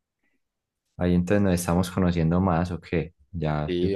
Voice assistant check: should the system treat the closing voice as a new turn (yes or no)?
yes